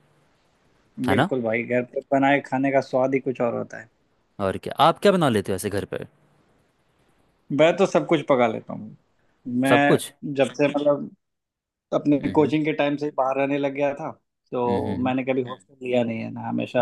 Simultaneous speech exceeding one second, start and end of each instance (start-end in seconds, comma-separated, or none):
none